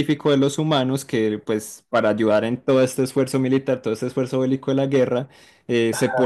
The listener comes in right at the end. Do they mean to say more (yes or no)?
no